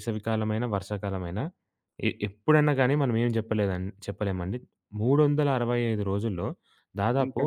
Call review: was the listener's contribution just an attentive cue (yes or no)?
yes